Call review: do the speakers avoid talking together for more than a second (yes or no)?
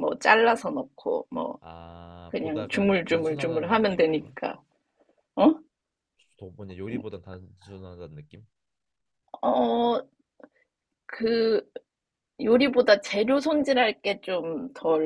no